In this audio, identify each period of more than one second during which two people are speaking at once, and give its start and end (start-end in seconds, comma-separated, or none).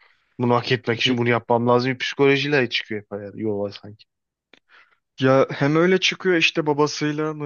none